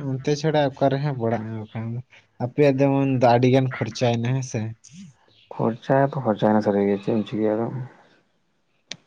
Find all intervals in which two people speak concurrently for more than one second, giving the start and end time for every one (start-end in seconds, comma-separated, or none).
none